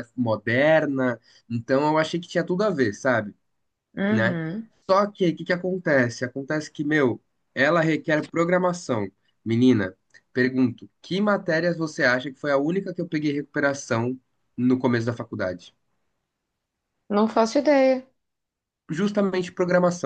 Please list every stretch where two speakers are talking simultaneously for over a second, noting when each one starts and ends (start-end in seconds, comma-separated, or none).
none